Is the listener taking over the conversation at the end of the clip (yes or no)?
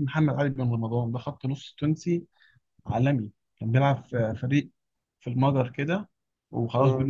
no